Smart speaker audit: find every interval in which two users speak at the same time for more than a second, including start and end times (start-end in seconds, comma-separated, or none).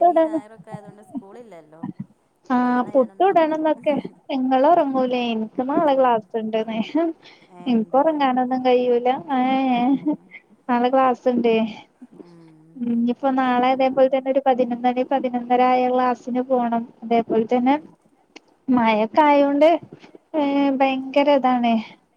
none